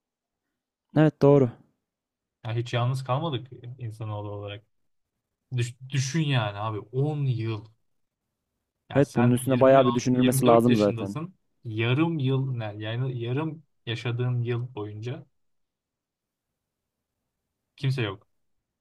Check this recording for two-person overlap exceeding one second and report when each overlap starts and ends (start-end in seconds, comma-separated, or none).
8.9-11.2